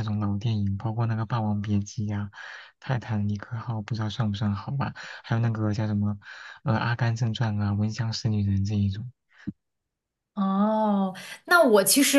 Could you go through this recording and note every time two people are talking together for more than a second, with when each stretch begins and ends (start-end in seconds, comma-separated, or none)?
none